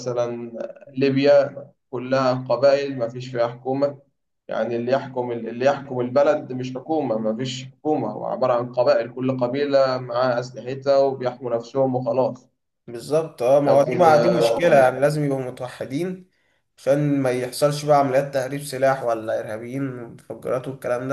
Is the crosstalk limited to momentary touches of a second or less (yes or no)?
yes